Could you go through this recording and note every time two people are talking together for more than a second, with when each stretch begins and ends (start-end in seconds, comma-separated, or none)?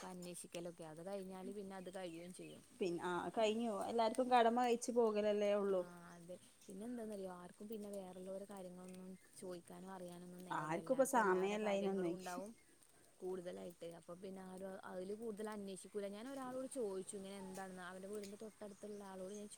none